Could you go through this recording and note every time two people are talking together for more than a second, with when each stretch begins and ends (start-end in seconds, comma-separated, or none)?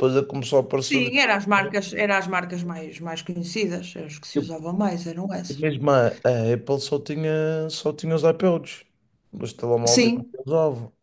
none